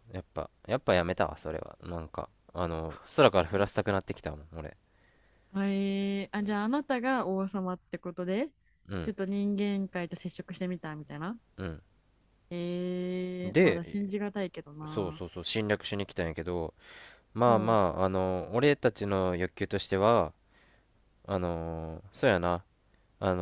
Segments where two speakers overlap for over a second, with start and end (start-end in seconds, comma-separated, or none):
none